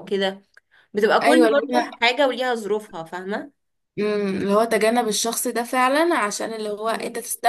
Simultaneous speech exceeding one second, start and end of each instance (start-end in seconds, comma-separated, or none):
none